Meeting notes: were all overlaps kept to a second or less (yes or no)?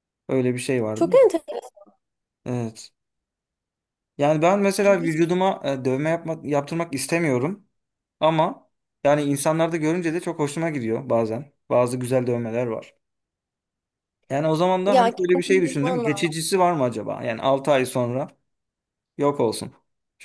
no